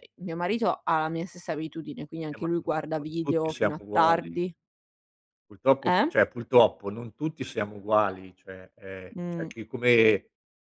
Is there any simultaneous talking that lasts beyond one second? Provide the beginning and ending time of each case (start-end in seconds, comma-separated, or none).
2.3-4.4